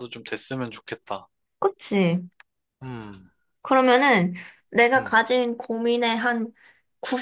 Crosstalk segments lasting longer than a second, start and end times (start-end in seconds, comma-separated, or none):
none